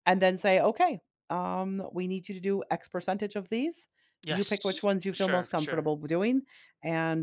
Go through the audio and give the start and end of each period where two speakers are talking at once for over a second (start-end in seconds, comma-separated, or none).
4.3-5.9